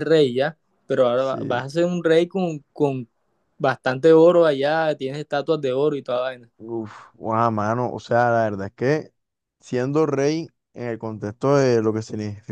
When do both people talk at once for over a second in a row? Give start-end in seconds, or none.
none